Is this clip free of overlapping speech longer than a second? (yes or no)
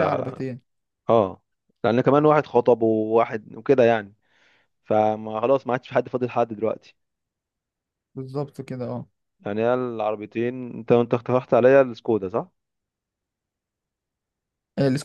yes